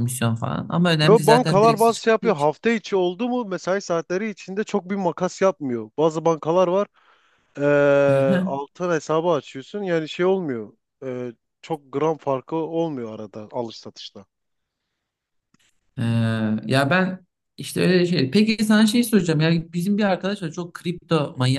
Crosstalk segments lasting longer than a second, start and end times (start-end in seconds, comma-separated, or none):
1.0-2.5